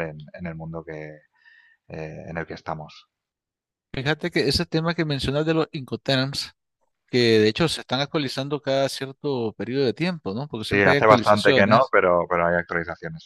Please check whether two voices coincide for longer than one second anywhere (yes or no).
yes